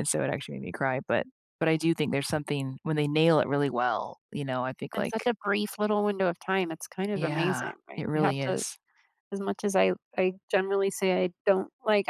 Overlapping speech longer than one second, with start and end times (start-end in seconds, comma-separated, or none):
7.1-8.6